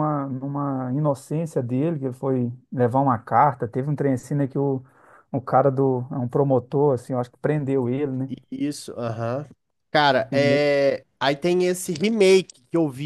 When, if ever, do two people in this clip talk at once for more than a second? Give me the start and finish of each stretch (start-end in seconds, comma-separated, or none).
none